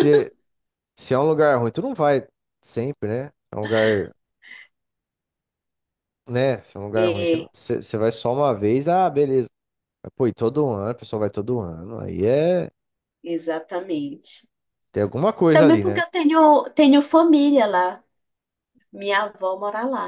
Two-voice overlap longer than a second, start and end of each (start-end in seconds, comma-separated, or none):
none